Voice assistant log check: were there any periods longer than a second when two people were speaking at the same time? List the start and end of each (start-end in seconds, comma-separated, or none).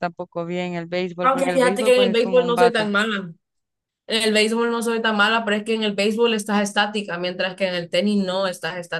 1.2-2.9